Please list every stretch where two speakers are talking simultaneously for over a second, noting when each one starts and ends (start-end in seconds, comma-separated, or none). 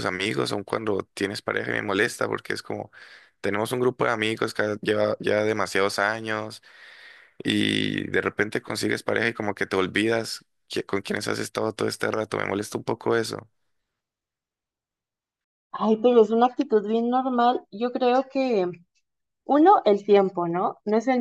none